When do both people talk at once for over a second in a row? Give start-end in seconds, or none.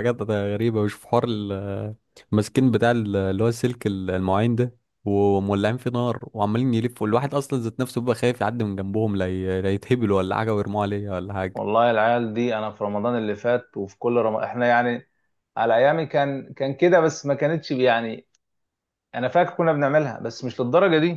none